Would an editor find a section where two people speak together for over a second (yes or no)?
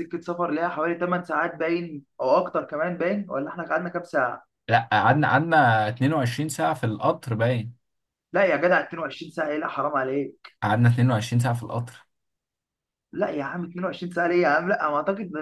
no